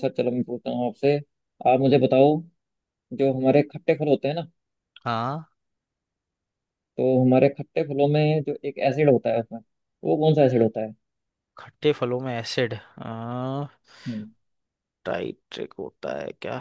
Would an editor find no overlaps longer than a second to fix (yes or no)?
yes